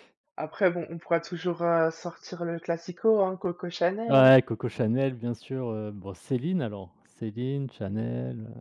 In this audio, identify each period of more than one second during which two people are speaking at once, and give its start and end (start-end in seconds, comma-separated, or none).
none